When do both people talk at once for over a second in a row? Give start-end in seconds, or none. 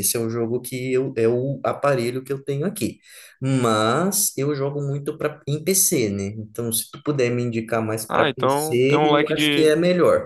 8.1-9.7